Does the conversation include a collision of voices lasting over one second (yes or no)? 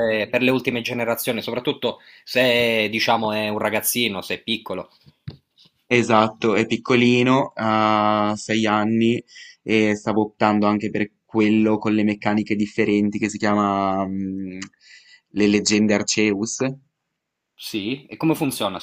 no